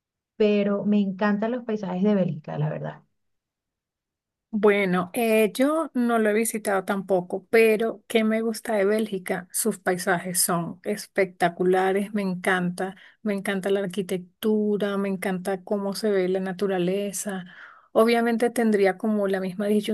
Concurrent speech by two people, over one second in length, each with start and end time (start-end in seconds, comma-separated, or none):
none